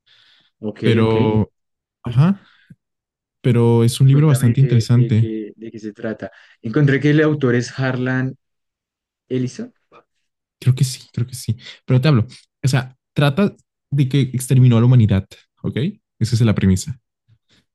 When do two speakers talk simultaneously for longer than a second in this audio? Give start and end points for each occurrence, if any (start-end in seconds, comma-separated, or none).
4.1-5.3